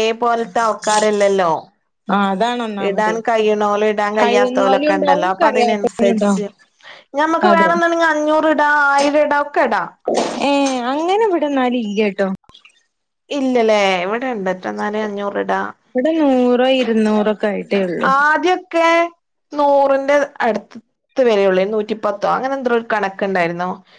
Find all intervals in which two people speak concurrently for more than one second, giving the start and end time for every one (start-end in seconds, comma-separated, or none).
4.2-6.4